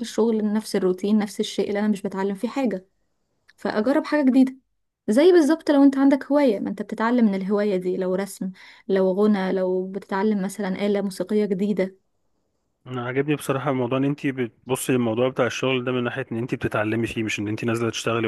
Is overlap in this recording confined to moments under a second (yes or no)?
yes